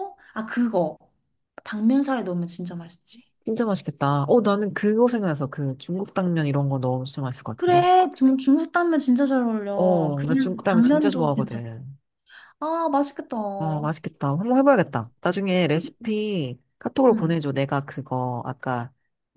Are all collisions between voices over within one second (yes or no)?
no